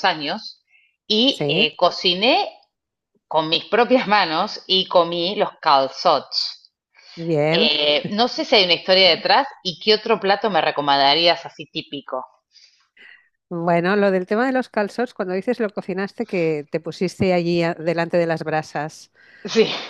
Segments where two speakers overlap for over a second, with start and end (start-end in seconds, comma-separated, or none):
none